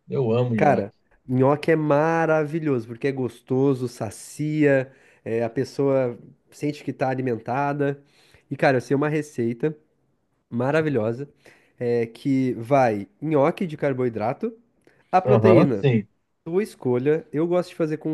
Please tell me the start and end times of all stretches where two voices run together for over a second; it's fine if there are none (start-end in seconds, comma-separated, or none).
none